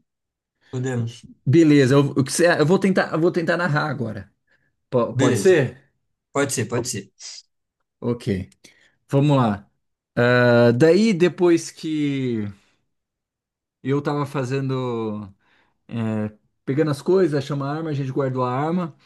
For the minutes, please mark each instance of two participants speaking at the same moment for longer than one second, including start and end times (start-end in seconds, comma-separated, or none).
none